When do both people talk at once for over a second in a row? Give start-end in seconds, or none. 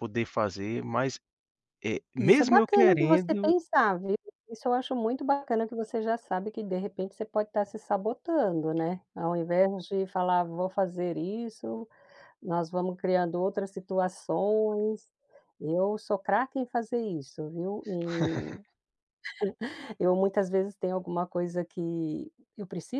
2.2-3.5